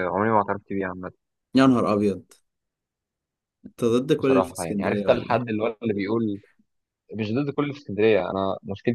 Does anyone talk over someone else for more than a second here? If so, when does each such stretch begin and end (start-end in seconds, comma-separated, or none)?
4.2-5.5